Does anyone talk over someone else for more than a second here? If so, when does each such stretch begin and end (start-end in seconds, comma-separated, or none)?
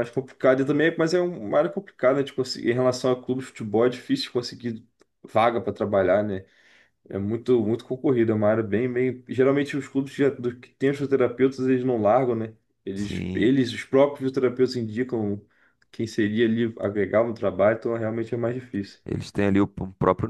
none